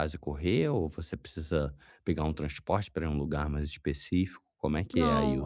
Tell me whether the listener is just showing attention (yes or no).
no